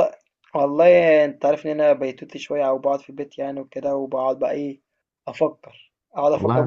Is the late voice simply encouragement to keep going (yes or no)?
yes